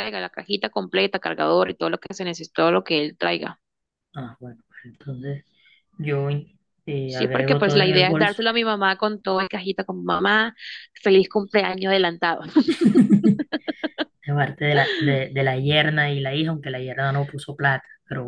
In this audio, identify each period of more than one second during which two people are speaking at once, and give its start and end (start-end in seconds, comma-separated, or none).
7.0-8.4